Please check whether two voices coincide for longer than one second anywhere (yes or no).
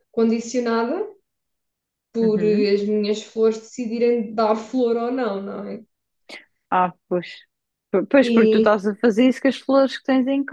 no